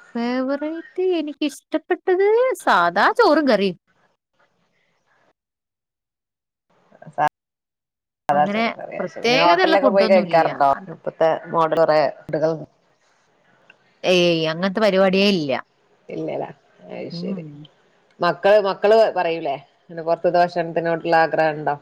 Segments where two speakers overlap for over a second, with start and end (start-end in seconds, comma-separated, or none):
8.4-10.9